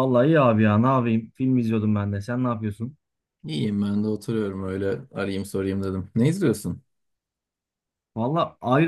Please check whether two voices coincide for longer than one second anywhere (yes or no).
no